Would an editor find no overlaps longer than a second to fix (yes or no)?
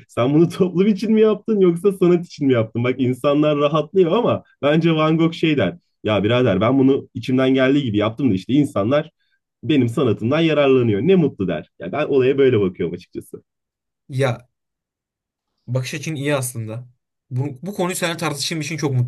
yes